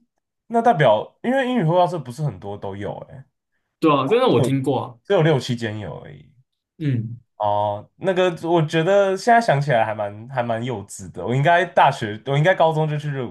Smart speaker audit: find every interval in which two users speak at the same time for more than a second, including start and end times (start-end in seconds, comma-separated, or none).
none